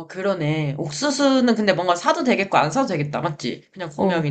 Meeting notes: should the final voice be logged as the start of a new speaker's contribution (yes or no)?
yes